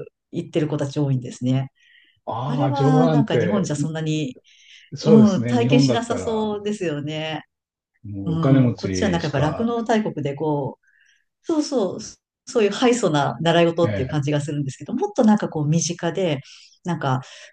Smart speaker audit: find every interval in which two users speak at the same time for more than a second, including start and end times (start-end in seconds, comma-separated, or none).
2.5-3.7, 5.0-6.5, 8.2-9.7